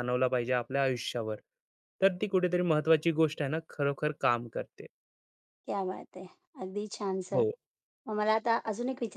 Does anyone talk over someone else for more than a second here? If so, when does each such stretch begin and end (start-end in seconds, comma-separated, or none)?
none